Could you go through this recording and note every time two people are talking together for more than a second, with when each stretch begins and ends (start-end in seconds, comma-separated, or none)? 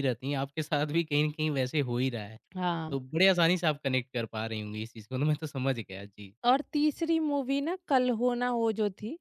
none